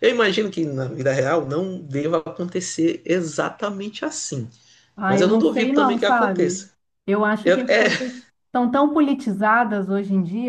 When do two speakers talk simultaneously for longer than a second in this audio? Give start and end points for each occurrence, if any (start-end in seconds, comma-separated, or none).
5.1-6.7